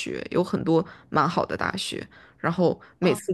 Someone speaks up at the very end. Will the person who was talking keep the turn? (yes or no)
yes